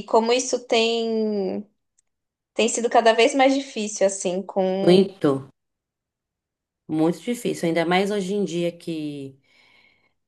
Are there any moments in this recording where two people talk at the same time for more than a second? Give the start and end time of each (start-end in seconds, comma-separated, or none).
none